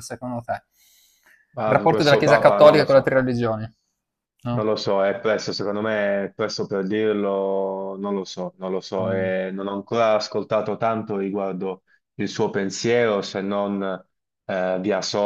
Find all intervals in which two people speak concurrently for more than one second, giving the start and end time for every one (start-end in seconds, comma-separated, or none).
1.6-3.1